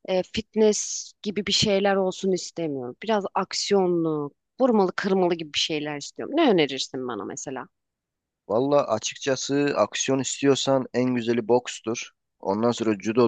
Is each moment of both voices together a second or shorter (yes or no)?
yes